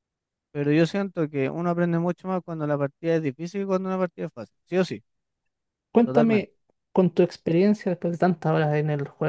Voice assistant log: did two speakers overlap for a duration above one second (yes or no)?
no